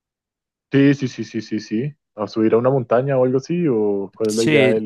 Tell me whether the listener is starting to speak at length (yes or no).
yes